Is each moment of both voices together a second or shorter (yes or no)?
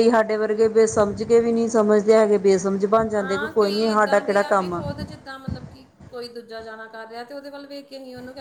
yes